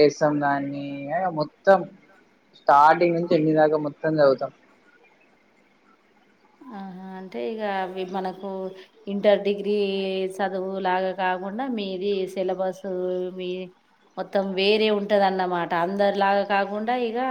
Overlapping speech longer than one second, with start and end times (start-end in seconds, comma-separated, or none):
none